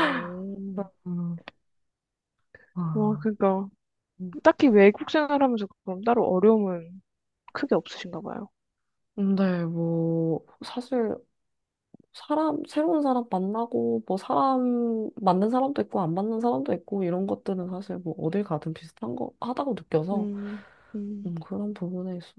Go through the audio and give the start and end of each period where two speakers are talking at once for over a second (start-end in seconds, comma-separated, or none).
none